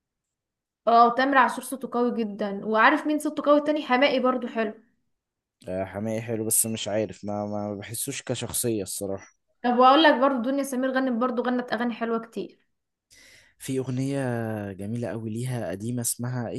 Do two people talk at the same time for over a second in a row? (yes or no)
no